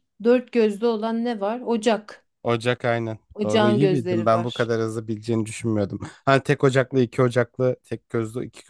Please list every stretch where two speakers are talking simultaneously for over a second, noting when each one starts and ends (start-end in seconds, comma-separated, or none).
3.3-4.7